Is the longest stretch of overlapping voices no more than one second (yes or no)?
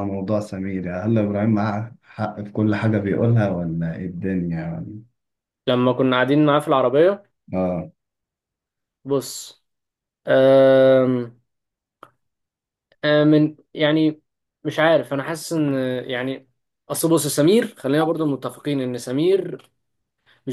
yes